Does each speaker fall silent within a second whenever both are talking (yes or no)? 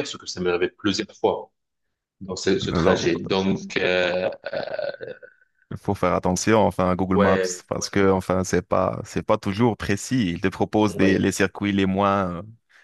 yes